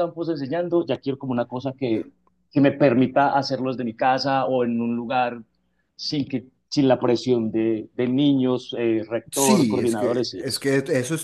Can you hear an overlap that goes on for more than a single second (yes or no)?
yes